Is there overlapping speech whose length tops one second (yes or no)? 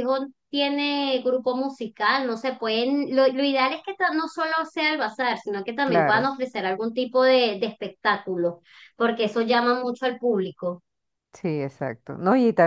no